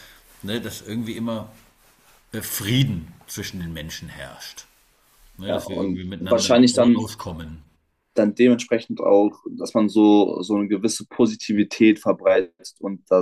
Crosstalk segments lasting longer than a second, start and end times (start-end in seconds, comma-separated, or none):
5.4-7.0